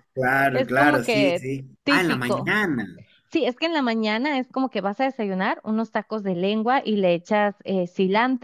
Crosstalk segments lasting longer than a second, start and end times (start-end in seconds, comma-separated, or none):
0.5-2.5